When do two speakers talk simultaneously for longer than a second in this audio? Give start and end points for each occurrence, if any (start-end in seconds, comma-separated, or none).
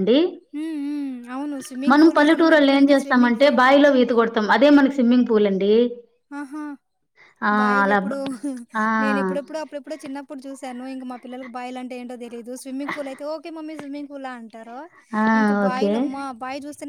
0.6-3.6